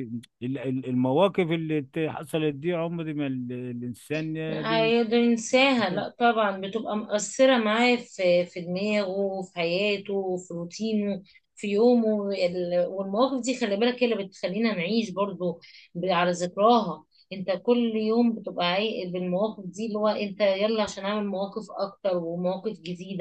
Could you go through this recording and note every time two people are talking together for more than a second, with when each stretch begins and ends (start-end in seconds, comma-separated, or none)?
none